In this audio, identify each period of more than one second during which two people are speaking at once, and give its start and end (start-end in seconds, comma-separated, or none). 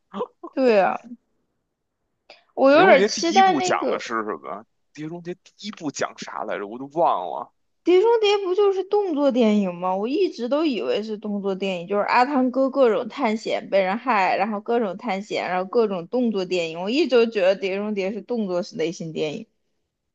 2.7-4.0